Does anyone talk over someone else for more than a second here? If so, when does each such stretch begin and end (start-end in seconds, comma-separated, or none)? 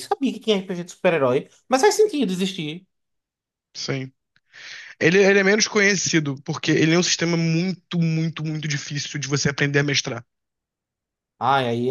none